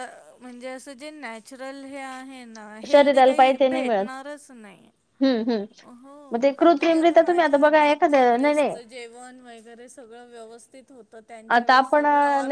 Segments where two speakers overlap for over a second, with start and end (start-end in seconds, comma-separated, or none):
2.9-4.2, 6.8-8.8